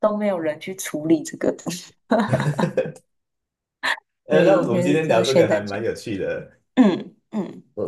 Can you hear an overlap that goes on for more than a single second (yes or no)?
yes